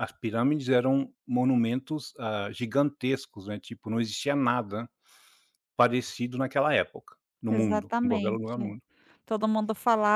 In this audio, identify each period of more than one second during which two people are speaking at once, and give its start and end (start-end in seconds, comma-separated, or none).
7.5-8.7